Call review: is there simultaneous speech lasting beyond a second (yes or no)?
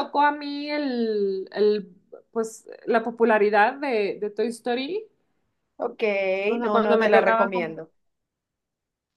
yes